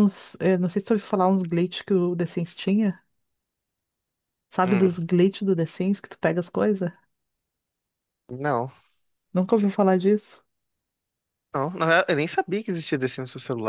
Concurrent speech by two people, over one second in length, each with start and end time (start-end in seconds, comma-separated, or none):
none